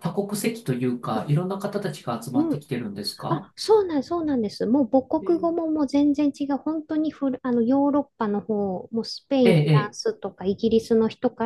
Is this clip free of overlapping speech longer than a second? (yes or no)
yes